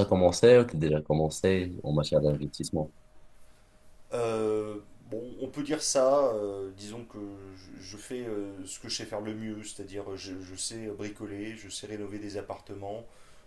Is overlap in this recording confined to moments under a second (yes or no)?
yes